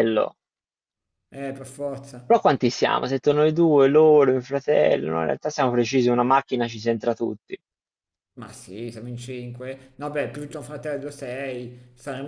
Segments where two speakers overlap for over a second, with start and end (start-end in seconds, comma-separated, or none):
none